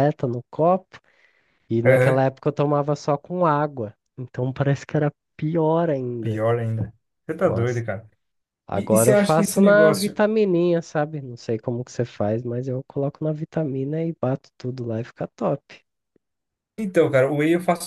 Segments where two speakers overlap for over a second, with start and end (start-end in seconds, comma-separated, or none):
8.7-10.2